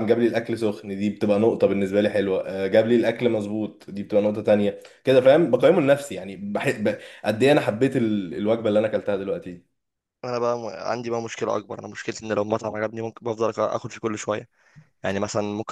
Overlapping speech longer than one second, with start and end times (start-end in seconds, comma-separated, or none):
none